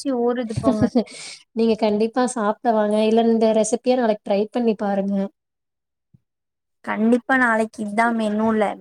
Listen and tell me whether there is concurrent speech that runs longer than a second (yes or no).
no